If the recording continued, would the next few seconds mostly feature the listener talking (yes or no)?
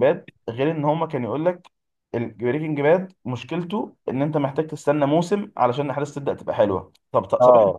no